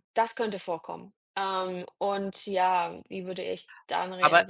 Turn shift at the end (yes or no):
yes